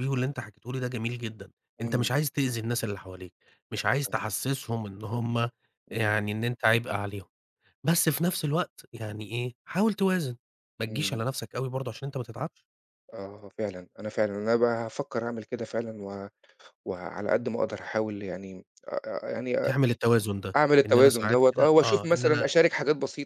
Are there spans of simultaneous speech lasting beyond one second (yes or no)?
yes